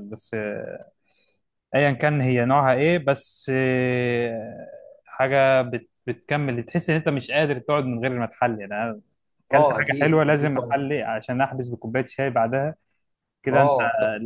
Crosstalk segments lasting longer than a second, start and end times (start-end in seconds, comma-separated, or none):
9.5-10.8